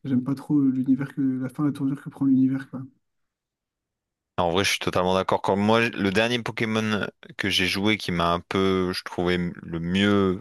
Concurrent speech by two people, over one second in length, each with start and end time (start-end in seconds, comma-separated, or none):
none